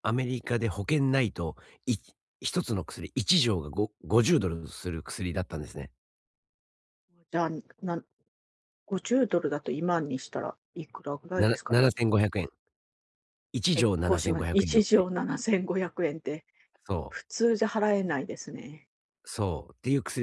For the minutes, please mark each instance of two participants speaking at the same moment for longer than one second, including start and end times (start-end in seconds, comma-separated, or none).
13.7-15.1